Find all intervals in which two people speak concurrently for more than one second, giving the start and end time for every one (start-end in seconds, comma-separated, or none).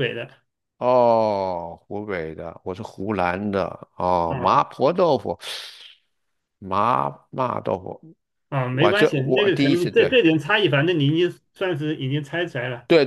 8.7-10.1